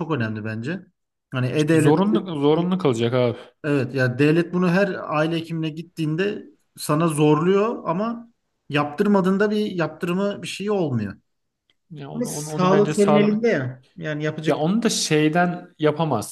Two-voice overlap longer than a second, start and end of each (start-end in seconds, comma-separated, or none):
12.1-13.4